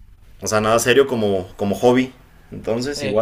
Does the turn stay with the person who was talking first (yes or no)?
no